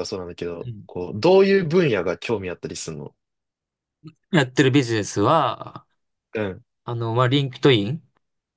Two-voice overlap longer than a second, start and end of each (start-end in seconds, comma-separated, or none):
none